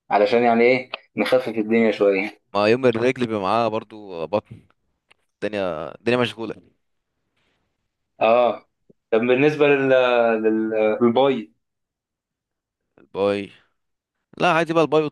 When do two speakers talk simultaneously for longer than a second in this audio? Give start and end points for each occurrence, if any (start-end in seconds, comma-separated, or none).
none